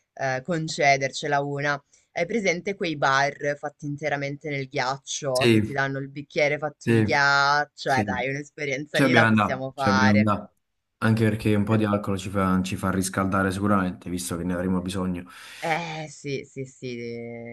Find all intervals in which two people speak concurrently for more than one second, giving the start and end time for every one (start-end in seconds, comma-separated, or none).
8.9-10.3